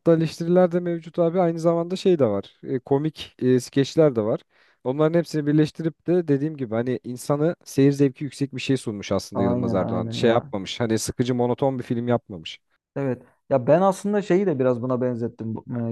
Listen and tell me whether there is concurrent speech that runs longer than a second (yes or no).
yes